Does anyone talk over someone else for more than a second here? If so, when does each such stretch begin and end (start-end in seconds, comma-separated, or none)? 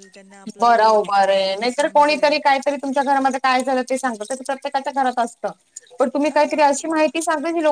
0.6-2.4